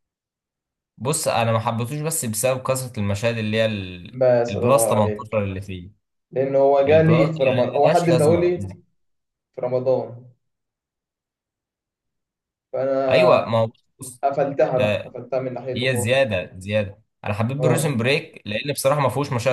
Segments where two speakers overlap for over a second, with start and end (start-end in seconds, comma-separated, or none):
4.1-5.5, 6.9-8.5